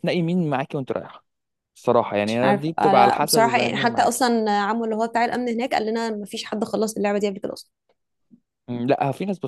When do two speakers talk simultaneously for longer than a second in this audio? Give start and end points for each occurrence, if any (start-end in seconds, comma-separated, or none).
2.2-4.3